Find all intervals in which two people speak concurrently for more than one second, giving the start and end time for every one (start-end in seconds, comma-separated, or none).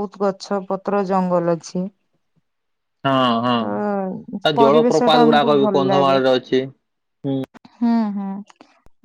4.5-6.2